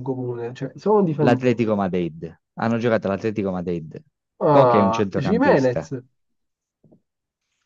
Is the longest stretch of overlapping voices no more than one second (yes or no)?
no